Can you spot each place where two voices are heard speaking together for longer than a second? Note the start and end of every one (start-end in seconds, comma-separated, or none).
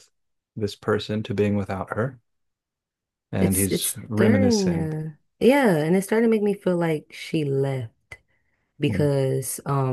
3.4-4.9